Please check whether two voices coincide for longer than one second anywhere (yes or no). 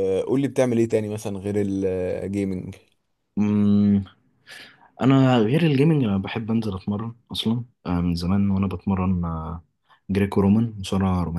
no